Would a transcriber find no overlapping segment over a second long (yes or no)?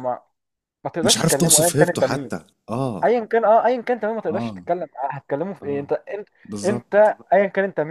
no